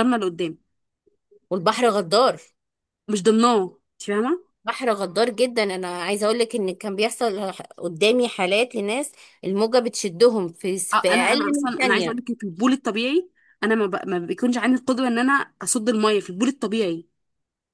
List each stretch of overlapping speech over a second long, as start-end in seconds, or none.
10.9-12.2